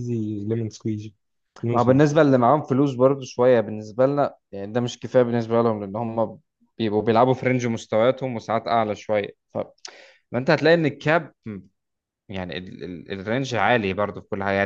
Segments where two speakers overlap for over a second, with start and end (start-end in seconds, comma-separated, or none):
none